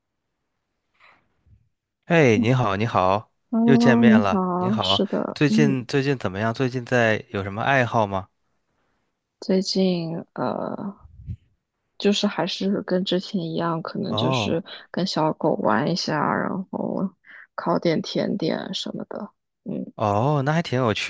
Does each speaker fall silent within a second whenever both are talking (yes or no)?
no